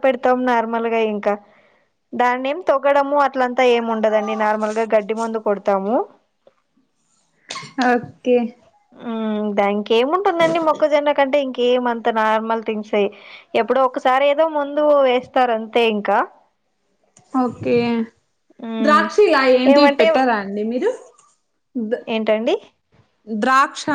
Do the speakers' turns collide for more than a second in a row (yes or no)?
no